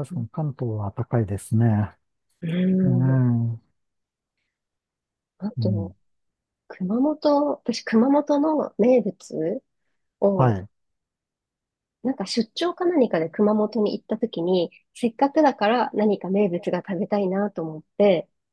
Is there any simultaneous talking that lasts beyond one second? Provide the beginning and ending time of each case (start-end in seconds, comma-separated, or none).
none